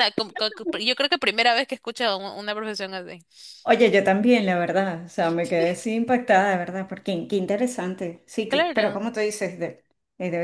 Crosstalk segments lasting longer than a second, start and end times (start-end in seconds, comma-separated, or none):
none